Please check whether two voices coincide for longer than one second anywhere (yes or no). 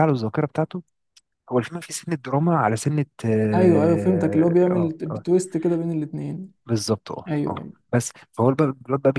yes